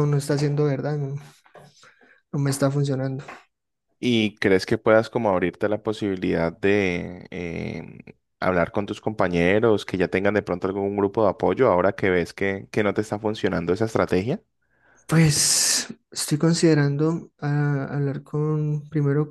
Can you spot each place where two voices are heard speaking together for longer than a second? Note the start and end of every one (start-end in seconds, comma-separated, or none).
none